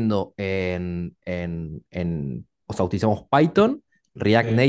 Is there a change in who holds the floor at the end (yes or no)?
no